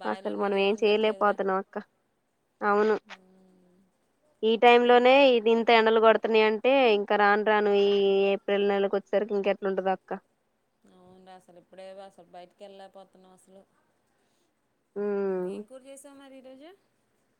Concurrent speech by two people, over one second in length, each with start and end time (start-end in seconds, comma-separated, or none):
none